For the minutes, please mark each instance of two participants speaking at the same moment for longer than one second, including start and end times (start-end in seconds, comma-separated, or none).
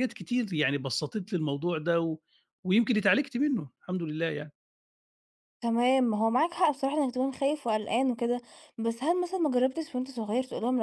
none